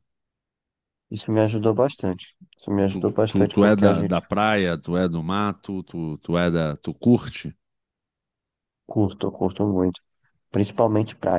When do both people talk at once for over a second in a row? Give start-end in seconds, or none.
2.9-4.2